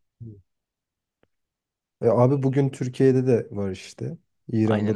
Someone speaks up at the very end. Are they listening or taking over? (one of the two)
taking over